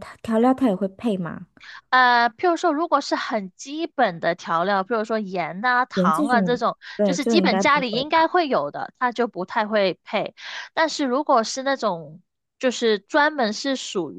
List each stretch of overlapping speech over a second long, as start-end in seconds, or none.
5.9-8.3